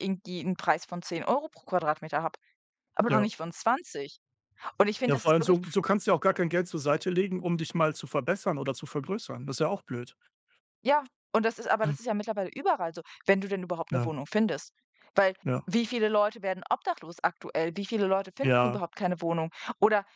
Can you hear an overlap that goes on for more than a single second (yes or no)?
no